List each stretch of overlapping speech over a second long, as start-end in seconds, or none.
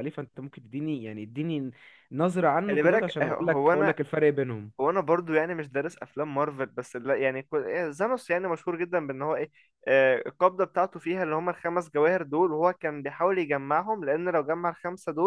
2.7-3.9